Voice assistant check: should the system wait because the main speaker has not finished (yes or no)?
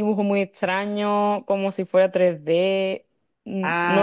no